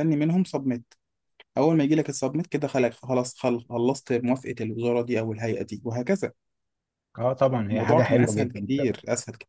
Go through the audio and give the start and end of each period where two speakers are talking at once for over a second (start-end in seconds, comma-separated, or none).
7.7-9.0